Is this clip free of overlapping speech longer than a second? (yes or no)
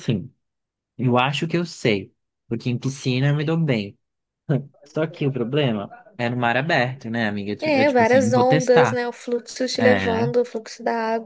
no